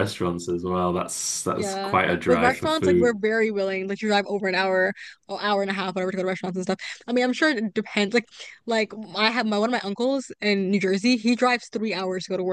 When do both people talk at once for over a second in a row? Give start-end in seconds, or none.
1.6-3.2